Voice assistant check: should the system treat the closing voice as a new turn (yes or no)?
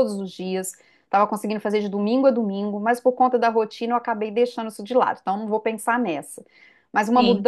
no